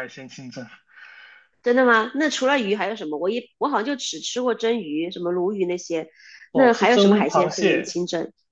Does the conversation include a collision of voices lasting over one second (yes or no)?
yes